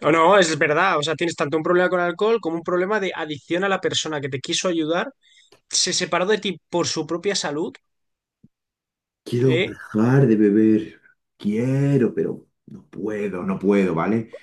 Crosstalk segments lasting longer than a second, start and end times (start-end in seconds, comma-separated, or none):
none